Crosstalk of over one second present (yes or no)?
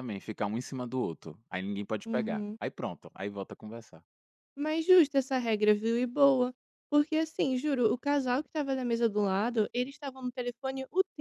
no